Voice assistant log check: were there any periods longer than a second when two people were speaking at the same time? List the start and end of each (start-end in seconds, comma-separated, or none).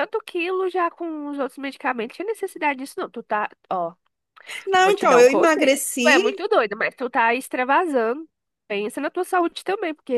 4.7-6.2